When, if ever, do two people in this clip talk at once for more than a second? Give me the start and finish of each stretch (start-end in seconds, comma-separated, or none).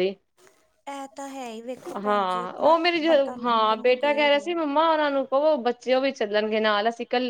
2.0-4.5